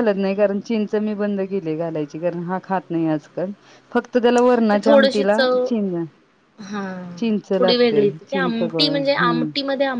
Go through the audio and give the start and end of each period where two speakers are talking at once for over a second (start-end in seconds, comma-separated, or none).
7.6-9.5